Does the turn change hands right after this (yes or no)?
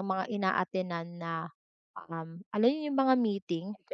no